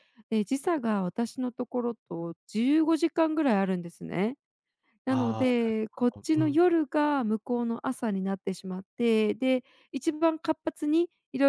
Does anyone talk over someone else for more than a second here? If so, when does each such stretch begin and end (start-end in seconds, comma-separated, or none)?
5.1-6.6